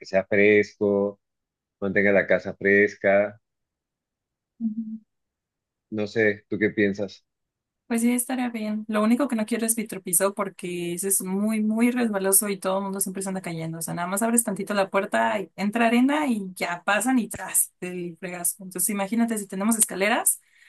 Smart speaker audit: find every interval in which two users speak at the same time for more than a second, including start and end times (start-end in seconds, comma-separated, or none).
none